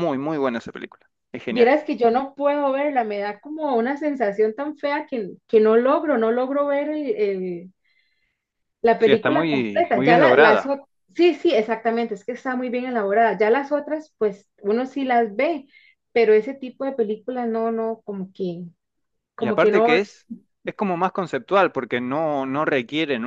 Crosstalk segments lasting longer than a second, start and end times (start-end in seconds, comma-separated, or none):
9.0-10.8